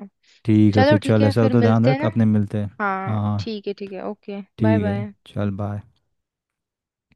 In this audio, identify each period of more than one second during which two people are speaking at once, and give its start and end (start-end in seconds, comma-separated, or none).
0.8-2.1